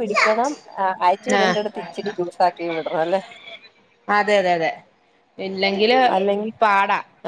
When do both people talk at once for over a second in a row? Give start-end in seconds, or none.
none